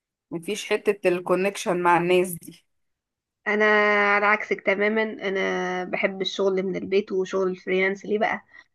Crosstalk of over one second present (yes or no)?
no